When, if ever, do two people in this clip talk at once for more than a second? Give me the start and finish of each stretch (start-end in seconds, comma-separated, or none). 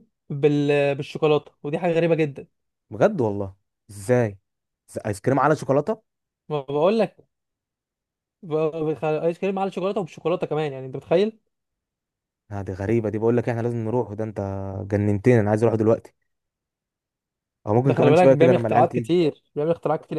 17.9-19.2